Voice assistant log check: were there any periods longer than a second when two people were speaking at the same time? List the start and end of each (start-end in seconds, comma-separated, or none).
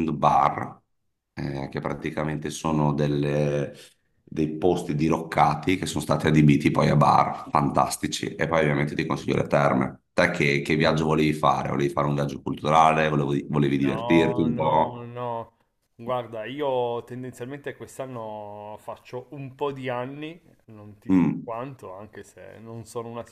13.8-15.2